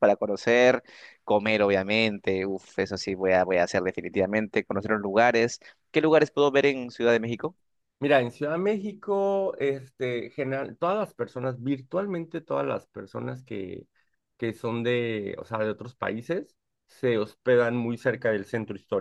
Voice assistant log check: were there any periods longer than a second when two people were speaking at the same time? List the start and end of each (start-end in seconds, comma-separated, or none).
none